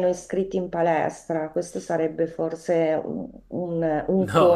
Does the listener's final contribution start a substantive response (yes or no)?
yes